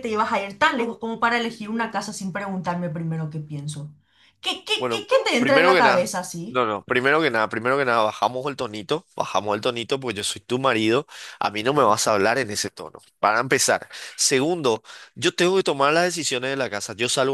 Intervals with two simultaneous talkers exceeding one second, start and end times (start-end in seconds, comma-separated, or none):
4.8-6.6